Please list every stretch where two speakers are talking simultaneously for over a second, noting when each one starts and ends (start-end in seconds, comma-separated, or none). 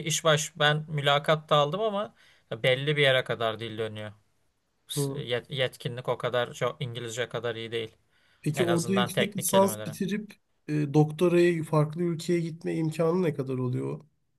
8.6-10.0